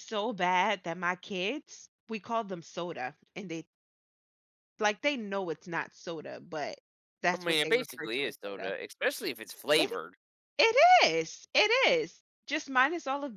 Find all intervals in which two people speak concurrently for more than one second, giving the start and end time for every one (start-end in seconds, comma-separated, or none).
7.3-8.7